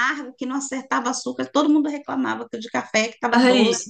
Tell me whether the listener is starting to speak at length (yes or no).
no